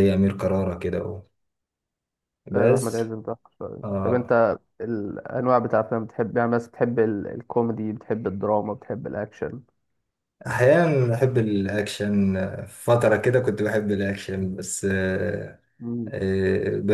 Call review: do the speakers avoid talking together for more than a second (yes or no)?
yes